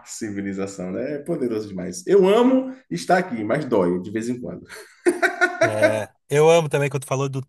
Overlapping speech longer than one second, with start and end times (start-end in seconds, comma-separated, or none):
none